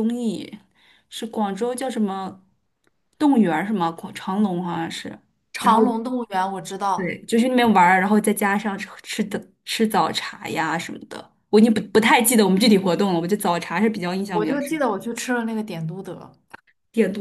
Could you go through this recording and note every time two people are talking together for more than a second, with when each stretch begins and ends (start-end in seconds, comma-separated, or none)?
none